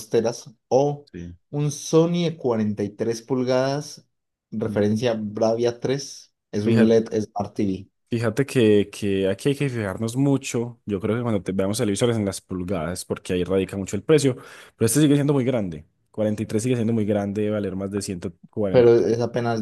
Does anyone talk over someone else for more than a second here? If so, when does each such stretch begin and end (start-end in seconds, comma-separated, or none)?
none